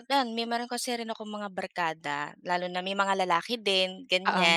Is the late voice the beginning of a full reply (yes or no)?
no